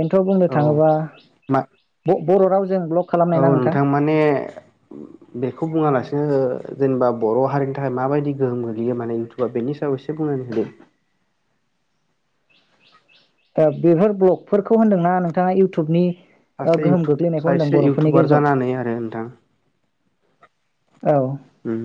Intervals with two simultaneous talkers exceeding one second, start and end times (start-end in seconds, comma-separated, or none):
16.7-18.4